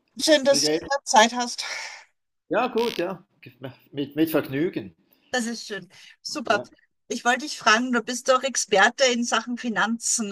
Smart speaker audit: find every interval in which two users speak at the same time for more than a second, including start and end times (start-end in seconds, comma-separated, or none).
none